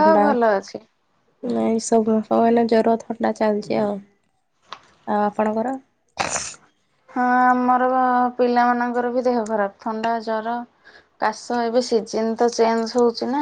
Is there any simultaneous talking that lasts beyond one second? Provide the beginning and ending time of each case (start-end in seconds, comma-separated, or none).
none